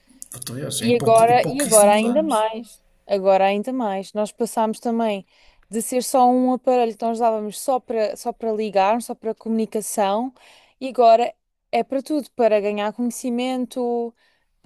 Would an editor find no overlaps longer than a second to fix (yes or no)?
no